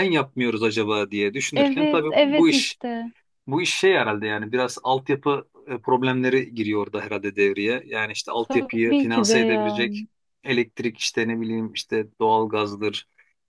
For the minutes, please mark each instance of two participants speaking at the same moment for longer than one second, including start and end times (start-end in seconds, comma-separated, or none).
1.6-2.8, 8.4-10.1